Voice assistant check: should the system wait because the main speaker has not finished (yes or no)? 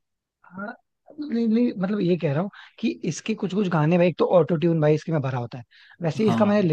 yes